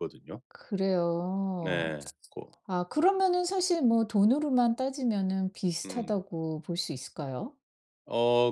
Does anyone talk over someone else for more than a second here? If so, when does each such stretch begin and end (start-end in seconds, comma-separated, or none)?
none